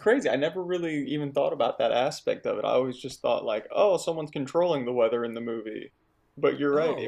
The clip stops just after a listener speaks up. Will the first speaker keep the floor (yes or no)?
no